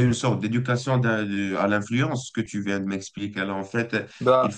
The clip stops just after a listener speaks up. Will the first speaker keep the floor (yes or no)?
yes